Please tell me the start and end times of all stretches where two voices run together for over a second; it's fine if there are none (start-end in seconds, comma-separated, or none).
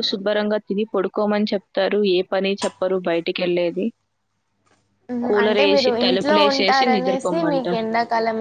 5.3-7.8